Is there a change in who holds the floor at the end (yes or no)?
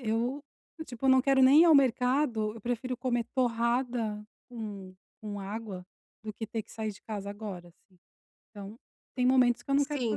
yes